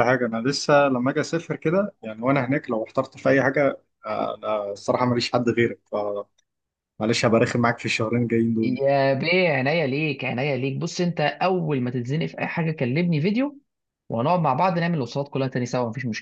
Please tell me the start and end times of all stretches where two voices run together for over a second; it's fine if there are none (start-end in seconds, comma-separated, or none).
none